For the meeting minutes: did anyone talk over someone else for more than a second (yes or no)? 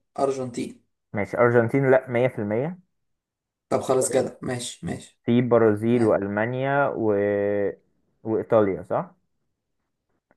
no